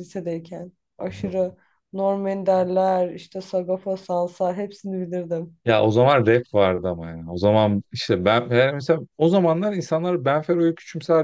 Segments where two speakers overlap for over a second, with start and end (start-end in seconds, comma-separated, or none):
none